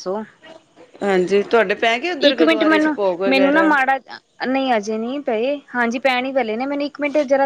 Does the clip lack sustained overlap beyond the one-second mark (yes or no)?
no